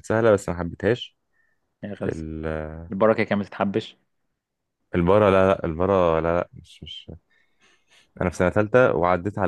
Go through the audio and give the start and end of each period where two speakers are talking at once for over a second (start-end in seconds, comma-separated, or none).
none